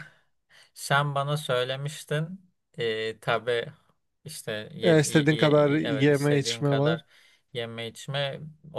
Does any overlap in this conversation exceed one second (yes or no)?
yes